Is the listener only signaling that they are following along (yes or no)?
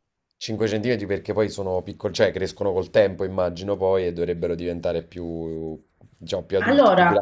no